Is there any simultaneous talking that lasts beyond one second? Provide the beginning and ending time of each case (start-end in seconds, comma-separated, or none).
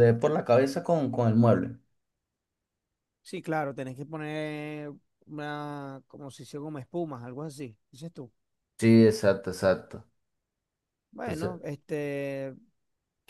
none